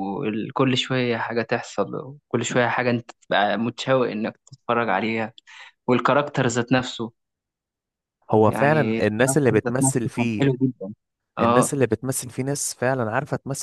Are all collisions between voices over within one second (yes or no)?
no